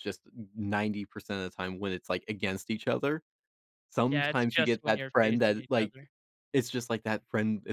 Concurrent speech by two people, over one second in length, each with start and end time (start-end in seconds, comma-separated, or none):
4.1-5.9